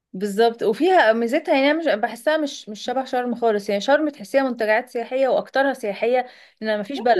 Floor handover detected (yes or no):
yes